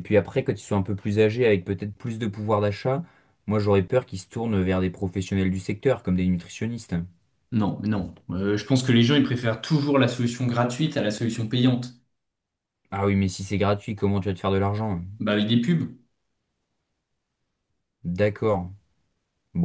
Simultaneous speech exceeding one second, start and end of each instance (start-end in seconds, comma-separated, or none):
none